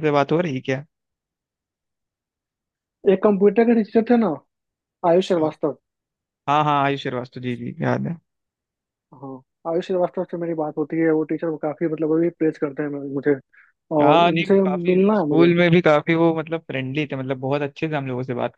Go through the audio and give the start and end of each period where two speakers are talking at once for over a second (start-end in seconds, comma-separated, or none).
14.0-15.5